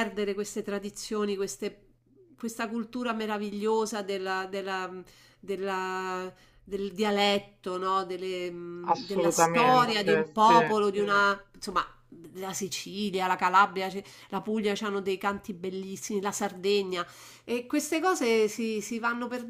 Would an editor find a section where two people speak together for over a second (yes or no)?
yes